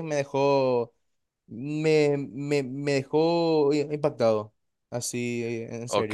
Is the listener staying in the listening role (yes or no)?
no